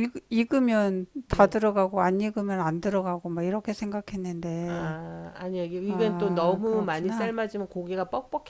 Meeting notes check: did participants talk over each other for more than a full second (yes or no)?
yes